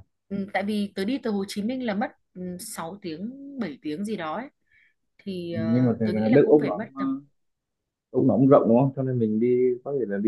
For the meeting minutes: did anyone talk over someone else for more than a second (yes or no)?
yes